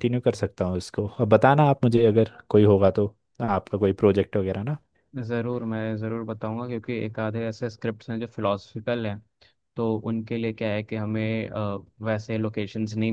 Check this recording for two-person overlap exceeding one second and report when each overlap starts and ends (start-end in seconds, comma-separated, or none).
none